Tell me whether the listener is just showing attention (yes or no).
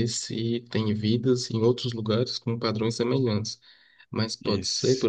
yes